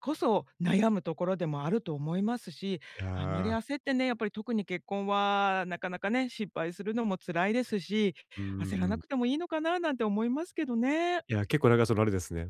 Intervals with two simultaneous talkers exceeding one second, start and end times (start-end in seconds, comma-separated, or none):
none